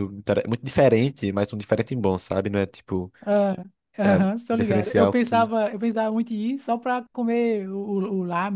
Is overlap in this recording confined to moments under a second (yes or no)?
no